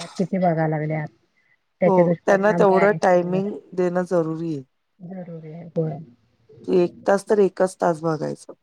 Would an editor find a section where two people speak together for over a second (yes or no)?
yes